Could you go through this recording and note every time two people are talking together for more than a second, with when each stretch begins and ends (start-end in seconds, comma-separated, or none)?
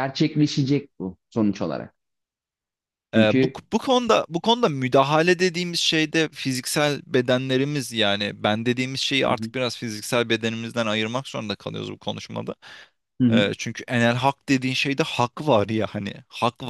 none